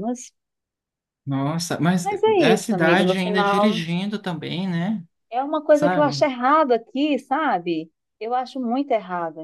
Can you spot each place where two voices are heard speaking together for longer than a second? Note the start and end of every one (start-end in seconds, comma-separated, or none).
2.0-3.8